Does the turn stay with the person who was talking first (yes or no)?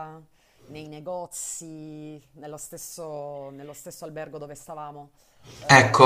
no